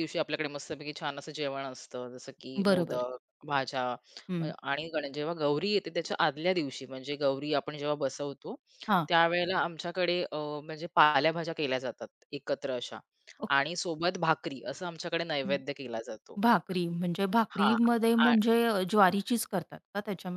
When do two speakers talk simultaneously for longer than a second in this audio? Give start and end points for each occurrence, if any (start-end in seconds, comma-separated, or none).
none